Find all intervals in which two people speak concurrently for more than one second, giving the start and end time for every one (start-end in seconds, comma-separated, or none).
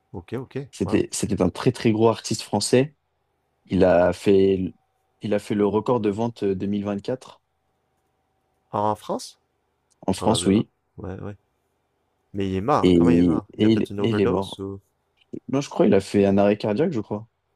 12.8-14.6